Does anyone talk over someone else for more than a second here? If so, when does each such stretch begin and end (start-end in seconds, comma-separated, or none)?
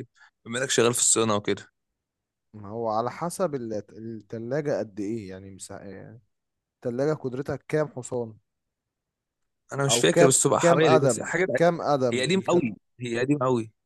9.9-11.5